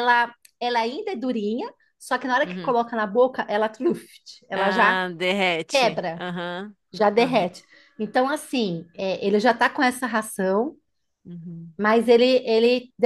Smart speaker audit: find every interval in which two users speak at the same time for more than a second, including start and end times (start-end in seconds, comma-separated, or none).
none